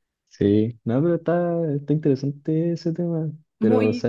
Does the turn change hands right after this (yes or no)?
no